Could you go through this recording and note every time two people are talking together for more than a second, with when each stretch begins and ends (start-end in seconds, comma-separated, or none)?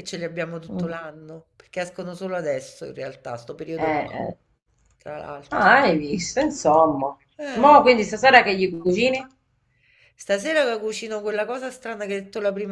none